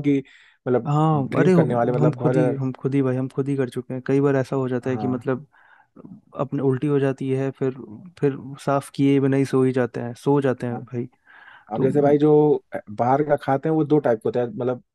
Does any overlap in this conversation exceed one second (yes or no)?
yes